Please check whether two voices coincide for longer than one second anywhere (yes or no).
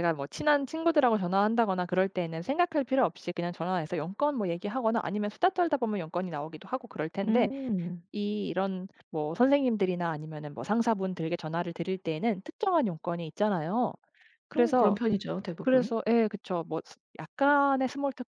no